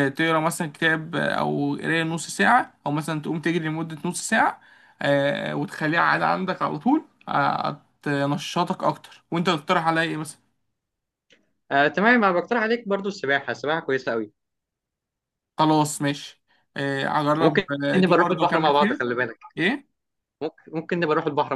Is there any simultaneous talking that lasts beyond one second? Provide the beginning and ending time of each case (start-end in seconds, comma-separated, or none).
17.4-19.0